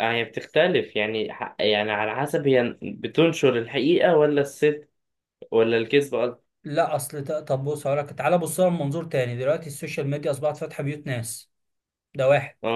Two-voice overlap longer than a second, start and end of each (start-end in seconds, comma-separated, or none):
none